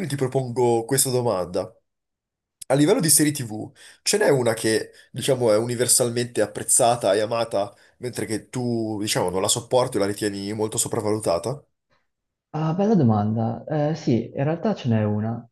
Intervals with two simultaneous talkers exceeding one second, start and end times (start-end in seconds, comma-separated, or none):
none